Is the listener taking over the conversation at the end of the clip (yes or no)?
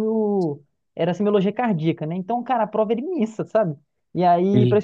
no